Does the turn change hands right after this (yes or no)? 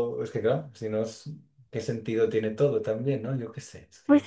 yes